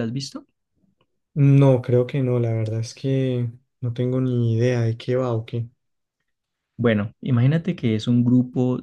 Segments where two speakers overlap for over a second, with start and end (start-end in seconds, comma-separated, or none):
none